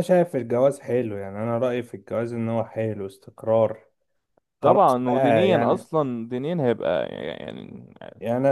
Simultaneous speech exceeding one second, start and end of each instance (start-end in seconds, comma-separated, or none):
4.6-5.9